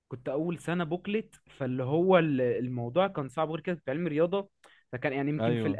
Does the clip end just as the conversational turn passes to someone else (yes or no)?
no